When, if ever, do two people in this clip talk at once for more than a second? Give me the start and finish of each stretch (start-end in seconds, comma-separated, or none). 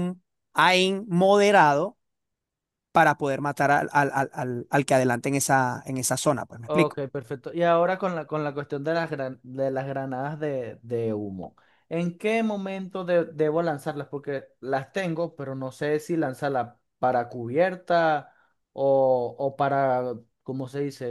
none